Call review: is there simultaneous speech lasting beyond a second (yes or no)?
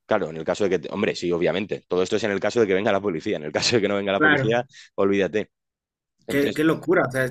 no